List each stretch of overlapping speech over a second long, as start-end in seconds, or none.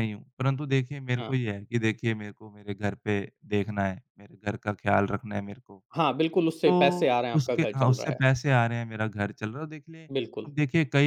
6.7-8.2